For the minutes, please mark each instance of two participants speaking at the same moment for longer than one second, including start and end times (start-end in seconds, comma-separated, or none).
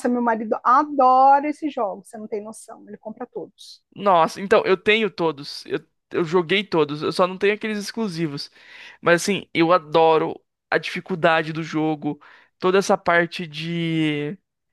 none